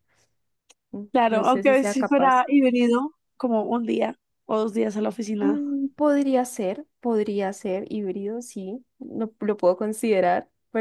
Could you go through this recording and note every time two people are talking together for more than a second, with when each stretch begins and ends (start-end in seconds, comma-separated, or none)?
1.1-2.5